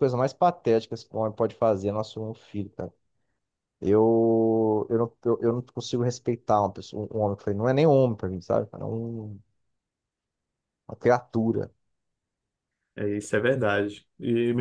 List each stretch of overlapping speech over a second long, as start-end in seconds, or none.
none